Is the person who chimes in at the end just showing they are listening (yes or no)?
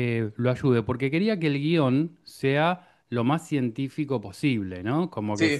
no